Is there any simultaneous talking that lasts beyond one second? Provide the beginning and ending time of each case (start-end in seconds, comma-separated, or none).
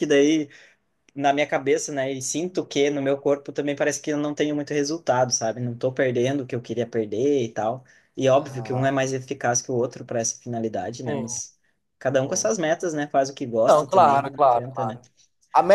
13.7-15.0